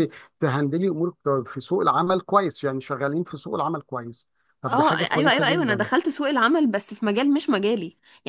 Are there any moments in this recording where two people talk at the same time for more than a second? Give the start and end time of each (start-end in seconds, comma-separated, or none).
4.7-5.9